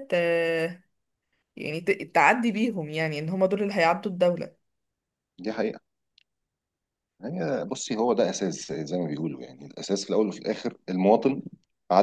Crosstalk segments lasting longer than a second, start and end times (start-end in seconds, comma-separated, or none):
none